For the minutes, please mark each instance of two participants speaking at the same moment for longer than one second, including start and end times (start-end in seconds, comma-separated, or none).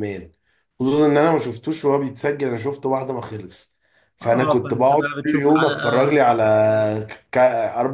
4.2-5.8